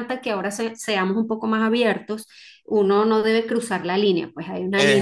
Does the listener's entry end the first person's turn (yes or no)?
no